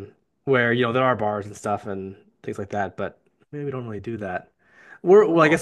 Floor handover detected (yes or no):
no